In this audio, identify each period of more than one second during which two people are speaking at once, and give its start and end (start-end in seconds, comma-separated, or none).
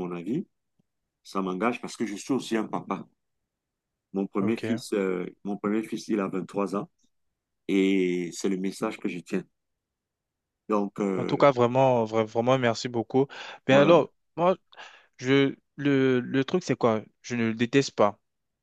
none